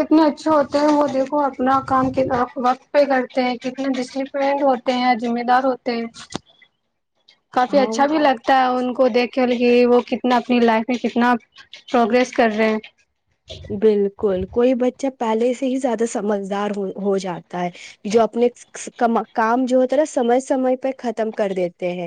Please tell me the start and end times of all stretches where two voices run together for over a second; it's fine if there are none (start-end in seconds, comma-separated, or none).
7.8-9.1